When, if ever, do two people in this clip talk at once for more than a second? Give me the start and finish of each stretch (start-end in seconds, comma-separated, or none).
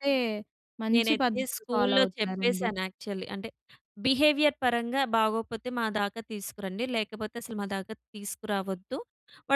0.9-2.7